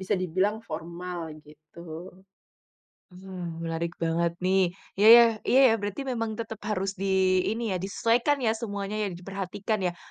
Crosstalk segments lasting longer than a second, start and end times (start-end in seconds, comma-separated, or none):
none